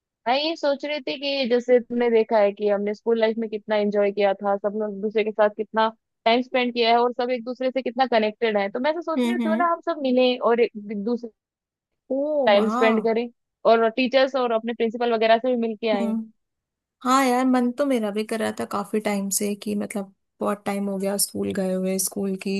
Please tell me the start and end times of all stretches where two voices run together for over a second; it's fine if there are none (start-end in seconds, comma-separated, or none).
none